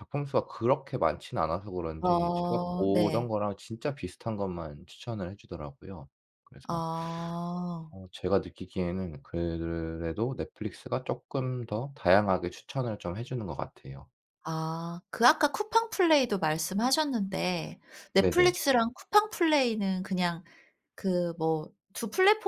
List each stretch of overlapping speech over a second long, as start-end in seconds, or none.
2.0-3.3